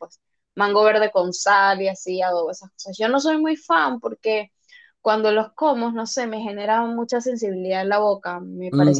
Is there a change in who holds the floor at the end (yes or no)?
yes